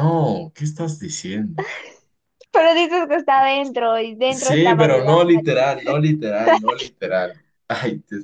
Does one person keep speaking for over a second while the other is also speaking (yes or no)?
yes